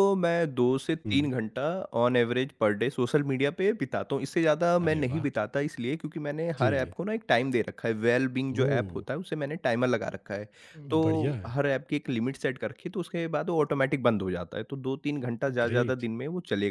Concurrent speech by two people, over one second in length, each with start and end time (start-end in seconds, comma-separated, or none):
none